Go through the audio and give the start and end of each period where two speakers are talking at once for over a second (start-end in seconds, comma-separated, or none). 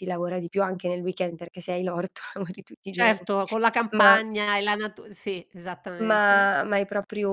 none